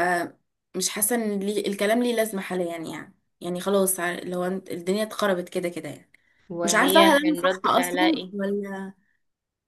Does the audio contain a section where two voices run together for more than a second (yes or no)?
yes